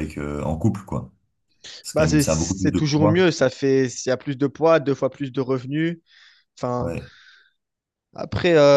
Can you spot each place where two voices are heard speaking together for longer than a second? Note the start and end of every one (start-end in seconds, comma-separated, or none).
1.9-3.3